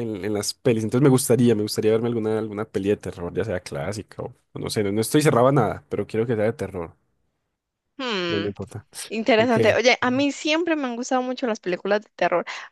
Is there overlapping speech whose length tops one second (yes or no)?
no